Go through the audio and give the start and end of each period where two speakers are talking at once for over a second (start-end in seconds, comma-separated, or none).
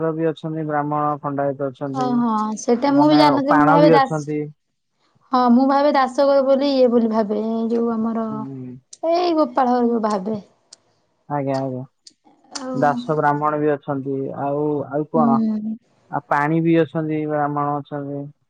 2.0-4.1